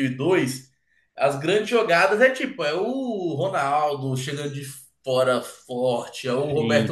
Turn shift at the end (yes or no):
no